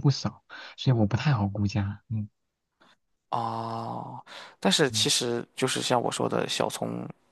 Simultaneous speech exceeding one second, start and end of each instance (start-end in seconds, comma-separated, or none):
none